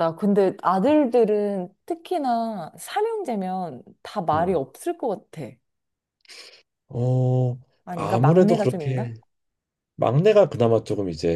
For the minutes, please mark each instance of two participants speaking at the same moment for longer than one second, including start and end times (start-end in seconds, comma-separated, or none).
7.8-9.1